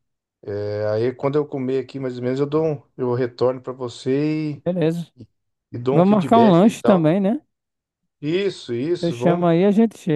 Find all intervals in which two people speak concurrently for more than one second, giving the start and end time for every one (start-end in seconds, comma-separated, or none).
5.9-7.2